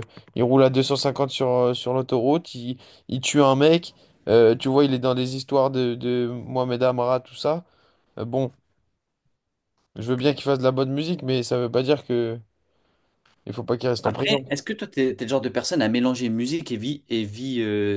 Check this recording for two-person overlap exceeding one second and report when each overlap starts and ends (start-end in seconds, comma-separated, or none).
none